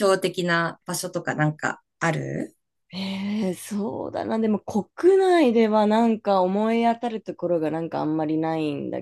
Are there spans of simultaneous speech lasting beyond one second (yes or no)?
no